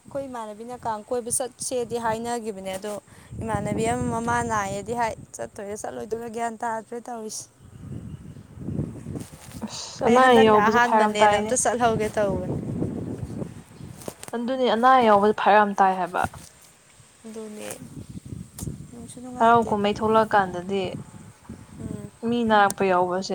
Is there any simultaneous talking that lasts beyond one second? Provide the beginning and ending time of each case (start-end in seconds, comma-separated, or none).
10.1-11.5